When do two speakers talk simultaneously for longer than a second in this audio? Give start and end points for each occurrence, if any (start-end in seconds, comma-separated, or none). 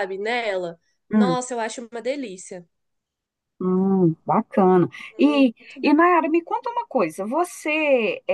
none